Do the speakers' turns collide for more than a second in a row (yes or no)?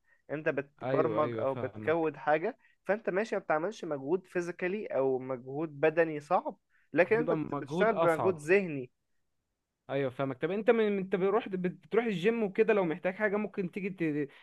yes